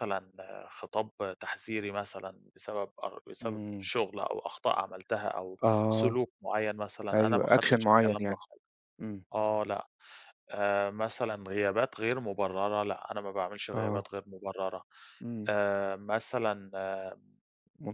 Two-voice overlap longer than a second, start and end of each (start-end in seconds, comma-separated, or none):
7.1-8.4